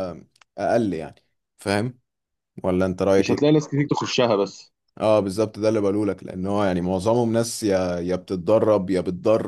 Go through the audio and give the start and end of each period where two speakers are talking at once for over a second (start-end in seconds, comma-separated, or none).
none